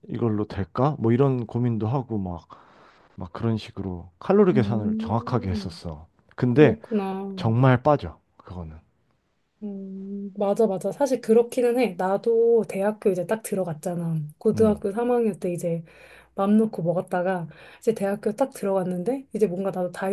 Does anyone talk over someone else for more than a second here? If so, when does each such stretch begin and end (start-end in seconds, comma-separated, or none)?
4.5-5.8